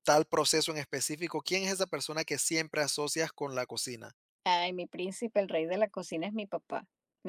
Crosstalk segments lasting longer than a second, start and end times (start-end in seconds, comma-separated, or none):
none